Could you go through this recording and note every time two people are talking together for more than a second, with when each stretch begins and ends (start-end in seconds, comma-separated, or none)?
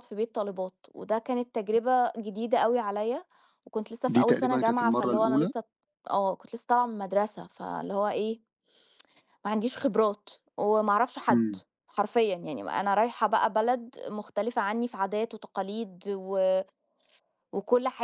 4.1-5.5